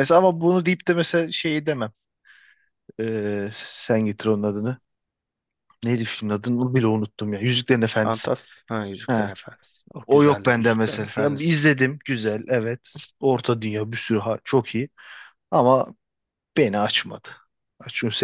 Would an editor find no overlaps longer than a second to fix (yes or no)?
no